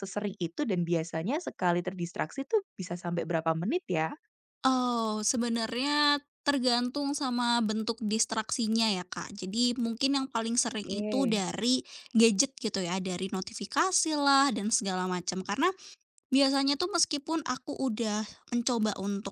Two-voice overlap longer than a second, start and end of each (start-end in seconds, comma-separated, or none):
none